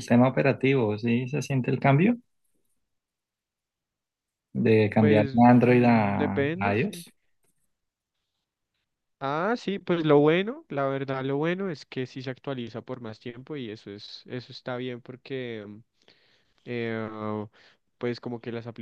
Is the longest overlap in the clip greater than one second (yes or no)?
yes